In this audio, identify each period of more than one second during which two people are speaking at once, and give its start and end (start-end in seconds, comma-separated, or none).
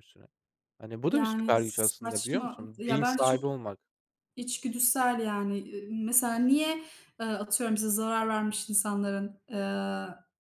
1.1-3.4